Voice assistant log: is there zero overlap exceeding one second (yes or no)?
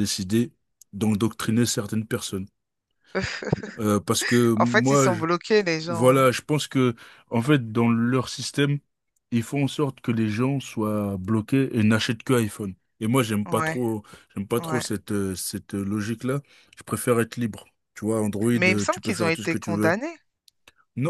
no